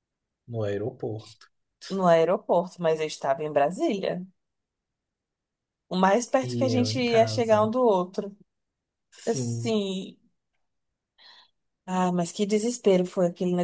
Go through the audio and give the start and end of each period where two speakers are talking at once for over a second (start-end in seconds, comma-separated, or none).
6.4-7.7